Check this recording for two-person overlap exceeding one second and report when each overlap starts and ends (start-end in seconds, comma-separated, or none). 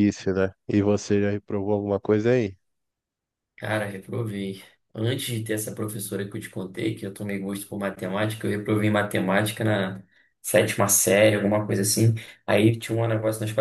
none